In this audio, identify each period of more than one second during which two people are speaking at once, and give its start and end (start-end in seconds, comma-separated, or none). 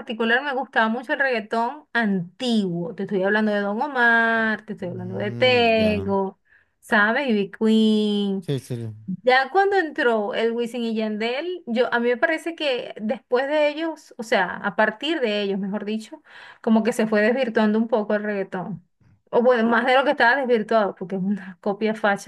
4.8-6.1